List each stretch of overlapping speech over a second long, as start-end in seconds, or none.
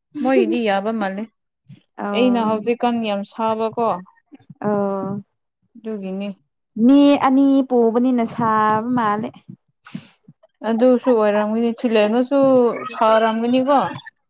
none